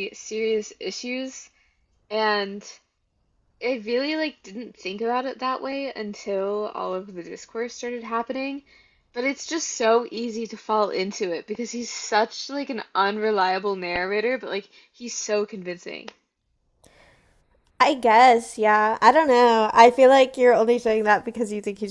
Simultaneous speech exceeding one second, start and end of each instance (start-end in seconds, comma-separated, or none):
none